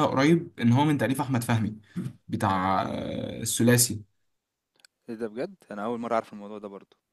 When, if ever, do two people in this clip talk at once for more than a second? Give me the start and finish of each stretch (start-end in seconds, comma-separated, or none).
none